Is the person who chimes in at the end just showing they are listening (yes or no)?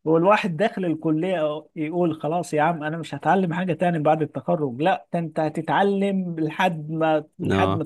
yes